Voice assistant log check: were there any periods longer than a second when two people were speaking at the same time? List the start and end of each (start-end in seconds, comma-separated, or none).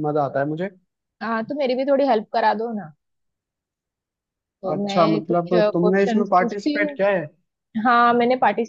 4.7-7.0